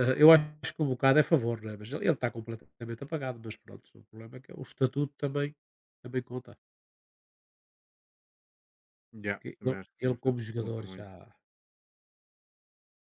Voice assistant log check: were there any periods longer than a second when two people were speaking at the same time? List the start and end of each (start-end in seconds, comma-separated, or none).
9.2-11.1